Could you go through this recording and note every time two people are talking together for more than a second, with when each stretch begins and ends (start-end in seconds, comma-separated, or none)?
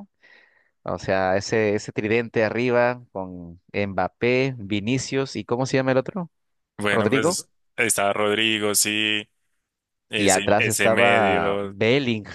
10.2-11.7